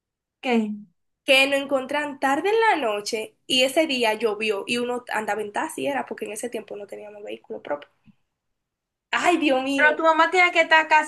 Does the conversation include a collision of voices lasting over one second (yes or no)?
no